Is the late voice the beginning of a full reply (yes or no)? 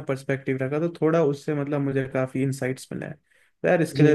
yes